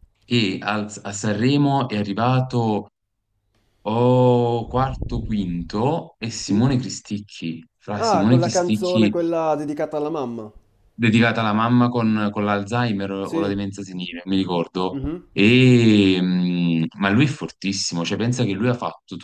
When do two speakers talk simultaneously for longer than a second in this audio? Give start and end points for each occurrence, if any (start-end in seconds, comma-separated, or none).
7.9-9.1